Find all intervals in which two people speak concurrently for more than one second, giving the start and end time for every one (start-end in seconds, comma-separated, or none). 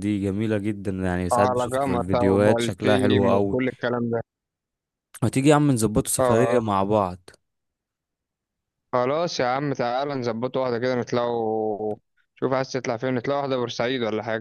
1.3-3.6